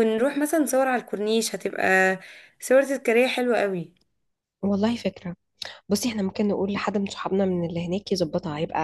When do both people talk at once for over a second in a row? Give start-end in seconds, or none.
none